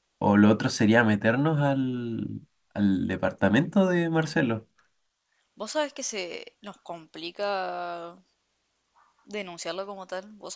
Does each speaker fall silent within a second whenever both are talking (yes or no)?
yes